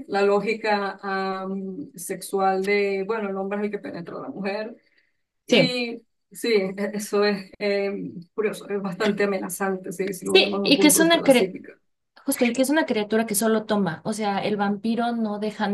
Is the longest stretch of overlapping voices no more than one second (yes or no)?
no